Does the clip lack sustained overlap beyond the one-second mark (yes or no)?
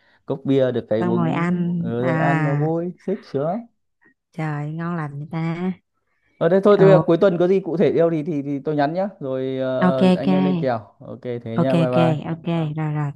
no